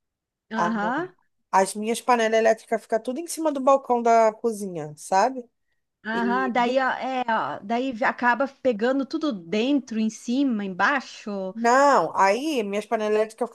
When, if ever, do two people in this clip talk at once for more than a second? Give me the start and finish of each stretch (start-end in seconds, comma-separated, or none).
none